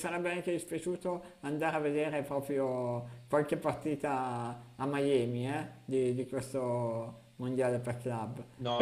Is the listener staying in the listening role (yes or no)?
no